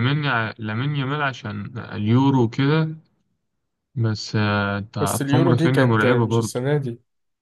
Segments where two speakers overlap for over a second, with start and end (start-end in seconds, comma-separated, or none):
5.0-6.6